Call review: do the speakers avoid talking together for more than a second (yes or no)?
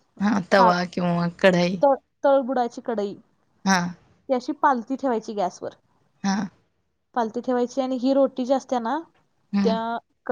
yes